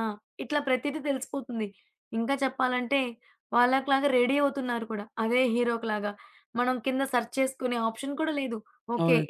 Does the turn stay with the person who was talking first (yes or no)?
yes